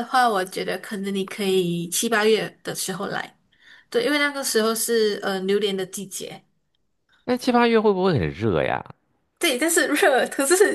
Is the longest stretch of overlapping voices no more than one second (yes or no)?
yes